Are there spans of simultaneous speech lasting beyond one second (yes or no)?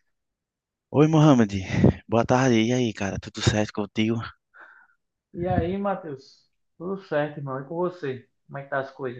no